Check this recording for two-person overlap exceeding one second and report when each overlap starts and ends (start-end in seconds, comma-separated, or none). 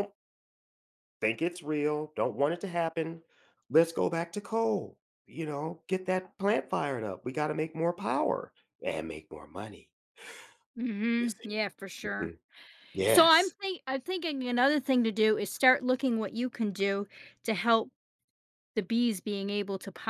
none